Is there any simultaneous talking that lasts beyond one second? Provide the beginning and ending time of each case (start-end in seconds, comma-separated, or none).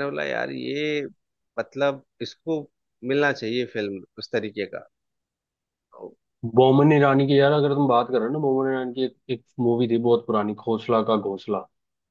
none